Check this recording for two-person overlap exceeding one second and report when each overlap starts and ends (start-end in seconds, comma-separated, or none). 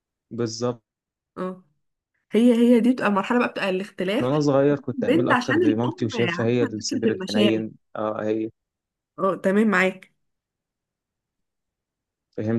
5.0-7.7